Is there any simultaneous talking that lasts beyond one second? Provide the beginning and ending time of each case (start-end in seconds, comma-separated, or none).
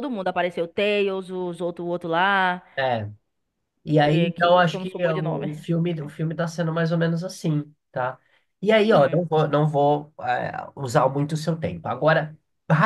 4.0-5.5